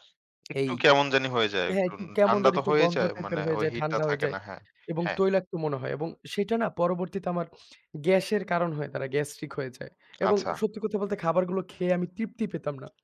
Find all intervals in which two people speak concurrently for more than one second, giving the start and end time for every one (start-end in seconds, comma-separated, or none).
1.7-4.3